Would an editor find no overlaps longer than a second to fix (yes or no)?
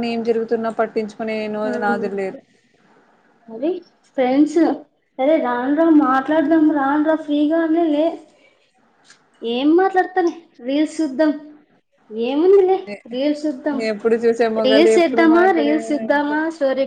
no